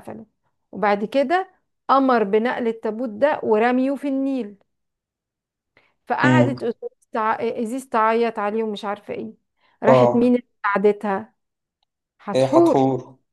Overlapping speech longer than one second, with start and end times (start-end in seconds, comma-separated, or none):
none